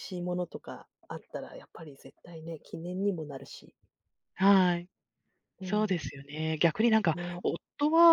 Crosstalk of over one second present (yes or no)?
no